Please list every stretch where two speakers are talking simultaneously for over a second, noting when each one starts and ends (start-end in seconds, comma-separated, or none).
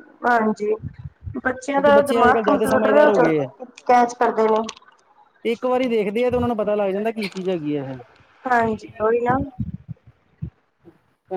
1.8-3.5